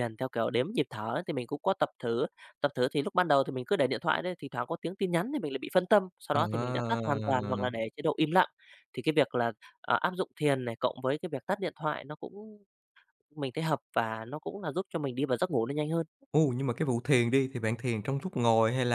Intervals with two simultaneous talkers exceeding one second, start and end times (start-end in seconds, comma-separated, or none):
6.3-7.7